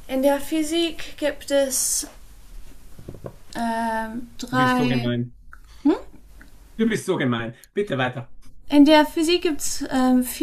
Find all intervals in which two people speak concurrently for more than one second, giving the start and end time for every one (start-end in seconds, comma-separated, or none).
none